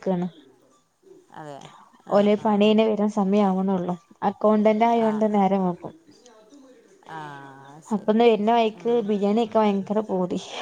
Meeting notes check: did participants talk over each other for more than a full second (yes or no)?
no